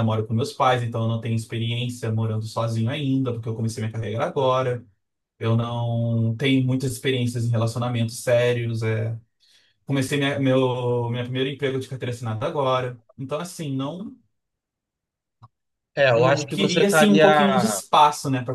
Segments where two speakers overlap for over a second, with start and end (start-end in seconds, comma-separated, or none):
16.1-17.8